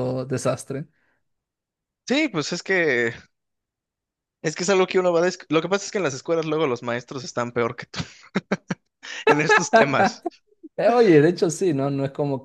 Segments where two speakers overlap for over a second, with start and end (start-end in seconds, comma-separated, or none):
none